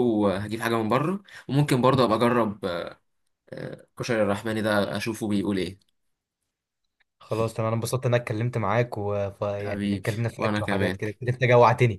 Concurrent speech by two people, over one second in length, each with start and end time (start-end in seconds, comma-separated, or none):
9.6-11.0